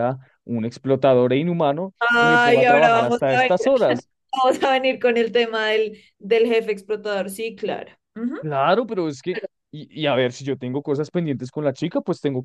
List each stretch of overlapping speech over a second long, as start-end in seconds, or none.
2.0-3.7